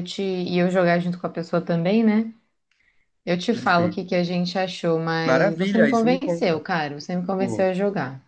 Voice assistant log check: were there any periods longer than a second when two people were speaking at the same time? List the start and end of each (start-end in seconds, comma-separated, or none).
5.2-6.6